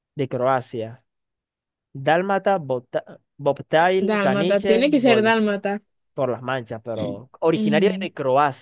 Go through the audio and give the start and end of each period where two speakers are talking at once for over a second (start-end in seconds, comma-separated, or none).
4.1-5.3